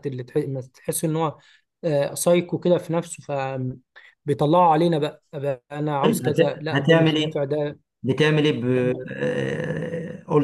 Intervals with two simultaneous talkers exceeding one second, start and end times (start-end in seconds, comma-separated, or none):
6.0-7.4